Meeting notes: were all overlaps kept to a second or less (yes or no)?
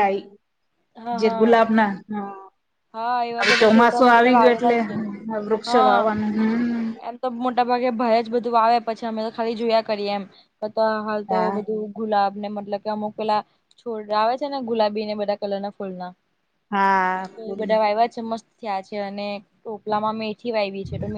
no